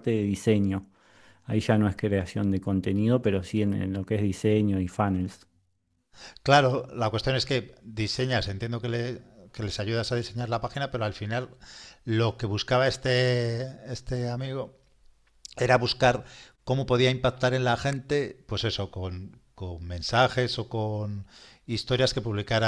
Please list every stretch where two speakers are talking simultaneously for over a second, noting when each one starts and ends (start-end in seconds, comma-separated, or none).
none